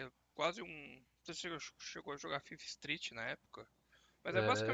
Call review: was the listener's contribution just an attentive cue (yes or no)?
no